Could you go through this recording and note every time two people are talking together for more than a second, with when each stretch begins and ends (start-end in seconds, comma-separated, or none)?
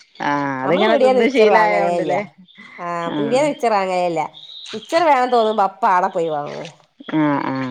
0.7-2.1